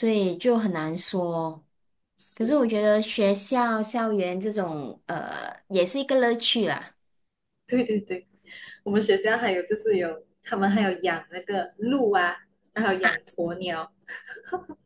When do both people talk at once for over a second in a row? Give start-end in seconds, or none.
none